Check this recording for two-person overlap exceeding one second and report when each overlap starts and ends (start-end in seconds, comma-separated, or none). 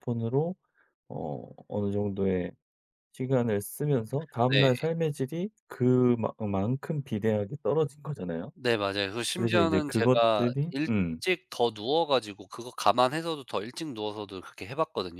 9.3-11.2